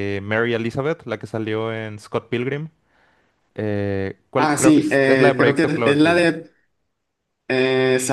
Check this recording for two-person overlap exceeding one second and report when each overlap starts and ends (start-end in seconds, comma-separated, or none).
4.4-6.2